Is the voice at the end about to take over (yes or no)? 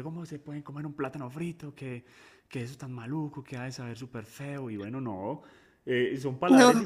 no